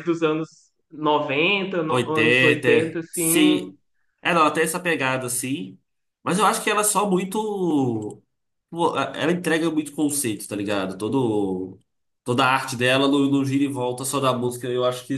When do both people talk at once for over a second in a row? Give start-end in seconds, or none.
1.9-3.7